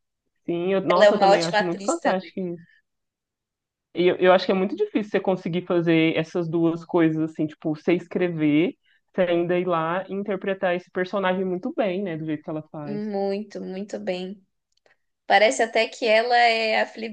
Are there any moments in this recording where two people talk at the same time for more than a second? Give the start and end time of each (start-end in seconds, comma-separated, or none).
0.9-2.3